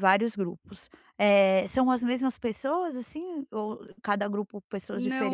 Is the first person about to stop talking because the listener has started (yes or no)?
yes